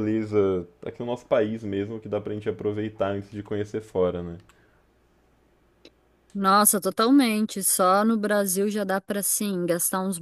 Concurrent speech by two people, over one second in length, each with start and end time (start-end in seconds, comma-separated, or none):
none